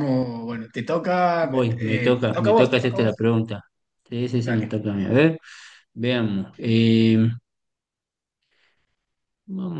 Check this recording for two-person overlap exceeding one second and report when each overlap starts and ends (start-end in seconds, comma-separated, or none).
1.4-3.2